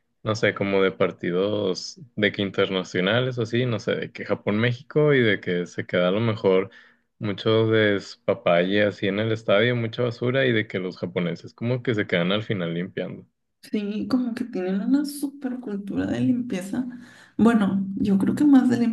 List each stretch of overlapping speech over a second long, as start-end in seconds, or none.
none